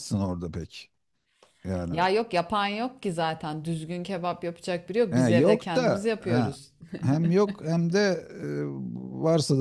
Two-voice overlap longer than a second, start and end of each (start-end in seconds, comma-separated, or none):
5.1-6.5